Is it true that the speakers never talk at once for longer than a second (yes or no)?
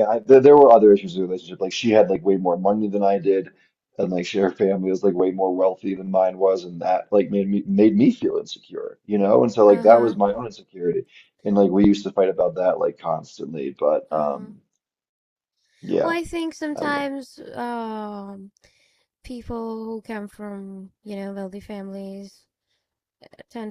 yes